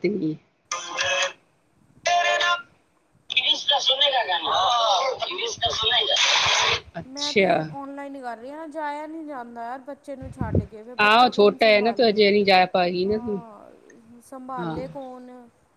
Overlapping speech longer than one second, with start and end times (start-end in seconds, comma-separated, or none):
11.0-12.2